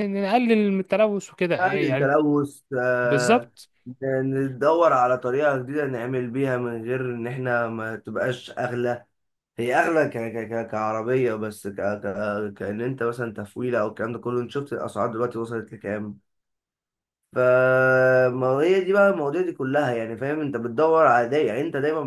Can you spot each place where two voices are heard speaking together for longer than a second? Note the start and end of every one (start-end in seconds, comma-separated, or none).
none